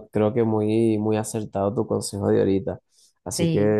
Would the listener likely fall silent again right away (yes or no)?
yes